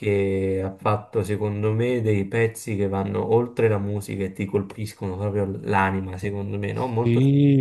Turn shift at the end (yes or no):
yes